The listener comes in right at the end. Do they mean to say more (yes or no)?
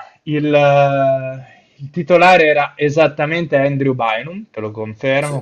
no